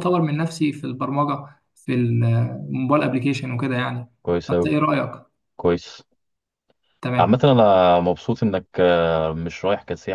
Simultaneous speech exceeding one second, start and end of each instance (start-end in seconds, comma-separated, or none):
none